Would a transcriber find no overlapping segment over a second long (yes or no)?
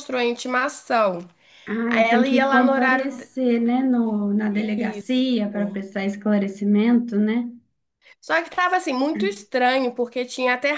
no